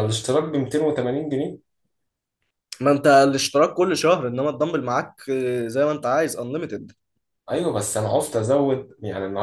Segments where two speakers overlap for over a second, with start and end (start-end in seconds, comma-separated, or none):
none